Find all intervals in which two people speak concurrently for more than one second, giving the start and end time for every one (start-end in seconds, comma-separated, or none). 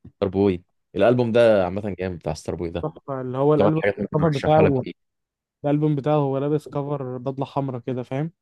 3.6-4.8